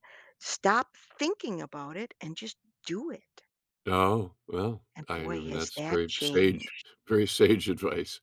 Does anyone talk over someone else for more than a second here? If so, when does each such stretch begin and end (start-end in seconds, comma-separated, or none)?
5.0-6.6